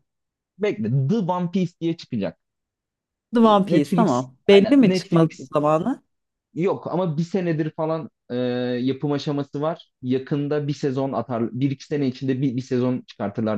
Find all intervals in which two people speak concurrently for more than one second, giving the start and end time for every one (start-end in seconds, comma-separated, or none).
3.4-5.5